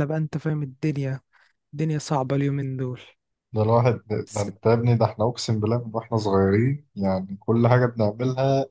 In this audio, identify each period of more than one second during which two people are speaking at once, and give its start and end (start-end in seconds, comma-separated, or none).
none